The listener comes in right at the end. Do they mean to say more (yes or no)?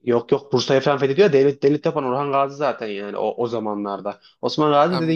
no